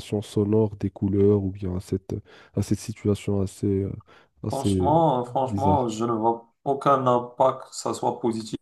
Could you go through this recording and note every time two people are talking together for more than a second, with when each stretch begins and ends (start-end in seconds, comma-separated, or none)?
4.5-5.9